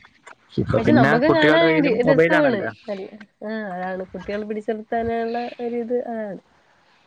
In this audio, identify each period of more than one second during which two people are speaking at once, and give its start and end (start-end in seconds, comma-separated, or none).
0.8-2.7